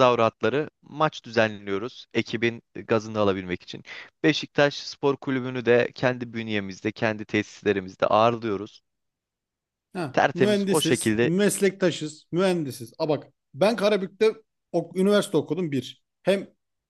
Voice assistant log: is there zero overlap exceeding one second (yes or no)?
no